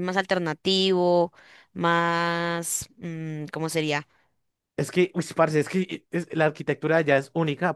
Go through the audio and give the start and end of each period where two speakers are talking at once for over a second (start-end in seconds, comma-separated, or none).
none